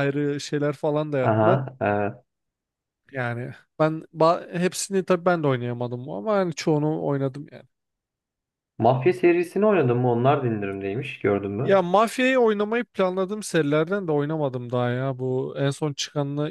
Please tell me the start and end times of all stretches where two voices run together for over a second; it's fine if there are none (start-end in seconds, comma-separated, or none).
none